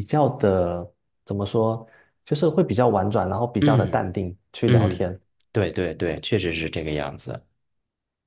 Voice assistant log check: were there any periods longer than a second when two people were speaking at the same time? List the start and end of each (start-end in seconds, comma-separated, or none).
none